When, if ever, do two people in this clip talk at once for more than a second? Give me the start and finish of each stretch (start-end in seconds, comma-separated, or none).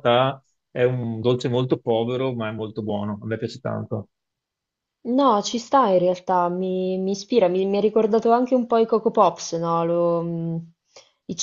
none